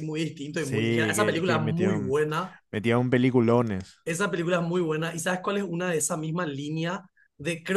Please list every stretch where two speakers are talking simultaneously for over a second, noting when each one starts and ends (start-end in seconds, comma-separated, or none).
0.6-2.1